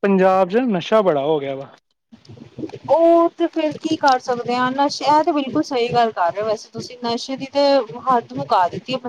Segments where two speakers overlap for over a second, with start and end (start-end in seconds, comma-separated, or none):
none